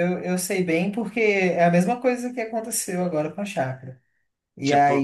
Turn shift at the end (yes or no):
no